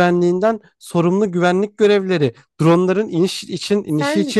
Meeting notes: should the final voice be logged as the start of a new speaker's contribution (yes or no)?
no